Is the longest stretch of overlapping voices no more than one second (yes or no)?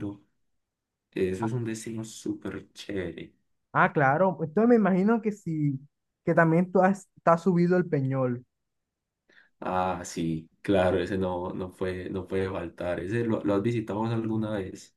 yes